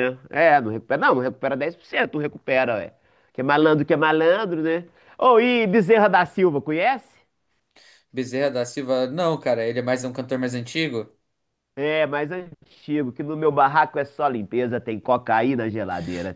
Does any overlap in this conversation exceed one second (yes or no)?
no